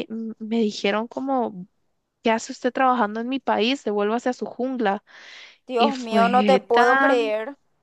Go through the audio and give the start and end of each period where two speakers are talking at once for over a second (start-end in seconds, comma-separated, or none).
5.8-7.3